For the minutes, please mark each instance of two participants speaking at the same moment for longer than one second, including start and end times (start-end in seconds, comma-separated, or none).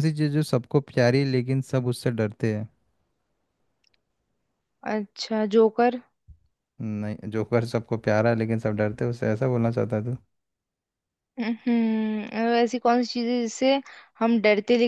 none